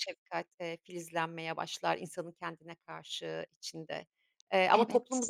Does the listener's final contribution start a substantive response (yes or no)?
no